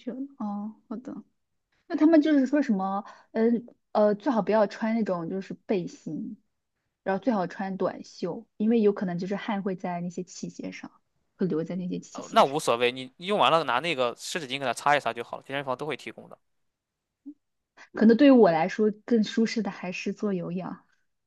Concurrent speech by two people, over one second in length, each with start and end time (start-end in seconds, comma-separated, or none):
none